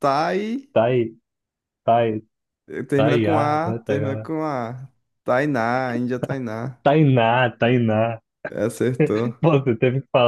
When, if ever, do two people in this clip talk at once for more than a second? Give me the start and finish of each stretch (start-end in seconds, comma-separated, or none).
2.9-4.3